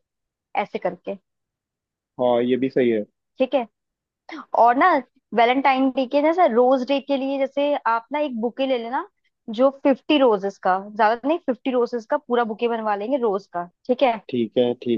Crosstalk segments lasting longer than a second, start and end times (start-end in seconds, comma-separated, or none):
none